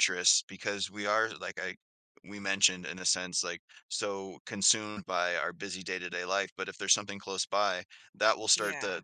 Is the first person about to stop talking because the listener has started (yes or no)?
no